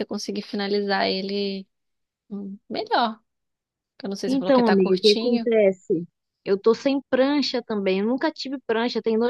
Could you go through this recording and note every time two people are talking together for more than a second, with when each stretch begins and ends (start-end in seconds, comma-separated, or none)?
4.3-5.5